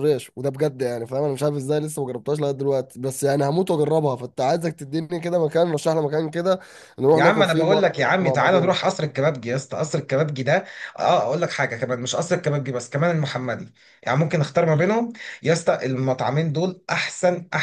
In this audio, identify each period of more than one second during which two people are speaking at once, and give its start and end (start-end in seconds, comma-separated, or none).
7.1-8.8